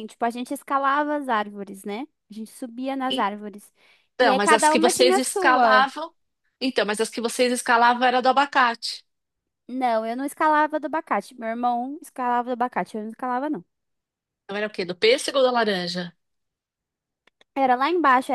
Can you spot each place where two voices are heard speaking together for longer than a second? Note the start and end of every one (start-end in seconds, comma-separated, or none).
4.2-5.9